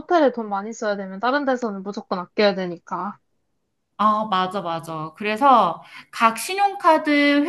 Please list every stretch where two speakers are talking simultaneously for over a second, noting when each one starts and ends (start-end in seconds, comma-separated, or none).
none